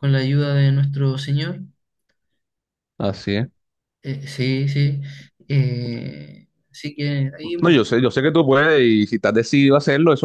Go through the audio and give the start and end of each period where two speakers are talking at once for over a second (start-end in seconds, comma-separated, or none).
none